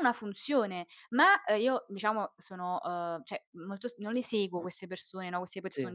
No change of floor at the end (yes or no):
yes